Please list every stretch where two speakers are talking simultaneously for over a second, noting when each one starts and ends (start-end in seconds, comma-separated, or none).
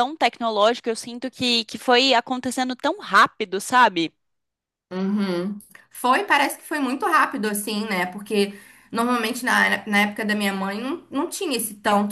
none